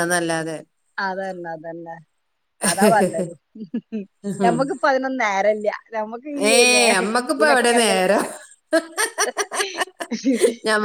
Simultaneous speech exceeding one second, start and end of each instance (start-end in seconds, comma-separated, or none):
none